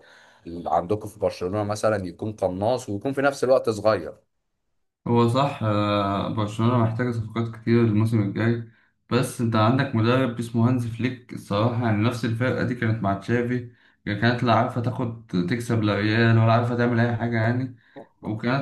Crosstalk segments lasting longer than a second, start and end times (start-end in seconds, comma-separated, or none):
none